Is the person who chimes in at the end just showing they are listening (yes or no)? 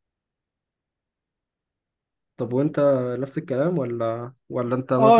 no